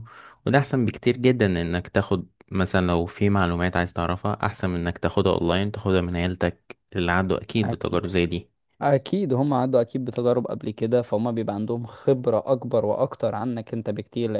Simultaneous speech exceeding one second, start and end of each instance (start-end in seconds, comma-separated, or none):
none